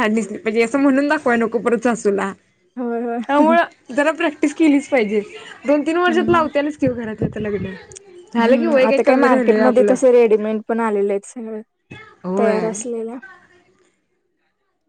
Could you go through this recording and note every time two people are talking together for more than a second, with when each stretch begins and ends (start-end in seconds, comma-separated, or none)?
8.4-9.9